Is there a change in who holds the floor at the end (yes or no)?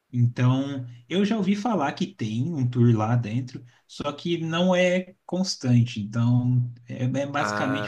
no